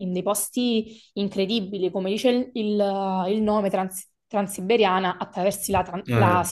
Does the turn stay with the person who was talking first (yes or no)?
yes